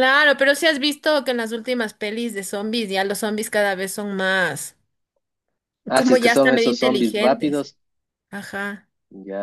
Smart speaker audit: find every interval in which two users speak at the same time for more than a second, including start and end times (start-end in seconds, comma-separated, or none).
6.0-7.7